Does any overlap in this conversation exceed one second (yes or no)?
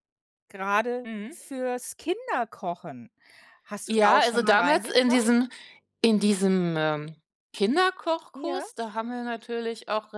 yes